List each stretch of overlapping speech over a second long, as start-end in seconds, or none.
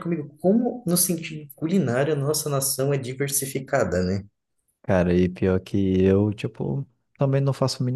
none